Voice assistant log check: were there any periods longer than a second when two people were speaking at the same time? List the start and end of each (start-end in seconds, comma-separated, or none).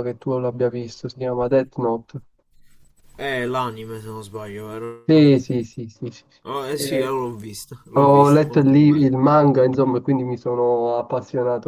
7.9-9.1